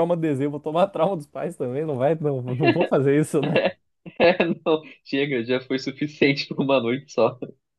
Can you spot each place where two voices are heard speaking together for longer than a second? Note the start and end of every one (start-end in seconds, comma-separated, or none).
none